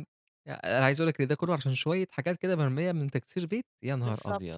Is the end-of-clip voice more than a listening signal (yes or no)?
yes